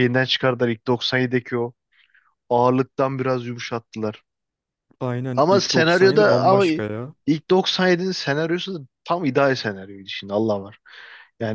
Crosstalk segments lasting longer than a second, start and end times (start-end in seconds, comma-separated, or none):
5.3-6.7